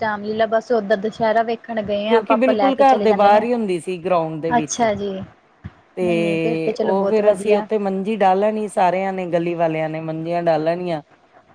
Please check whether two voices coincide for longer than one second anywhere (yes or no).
yes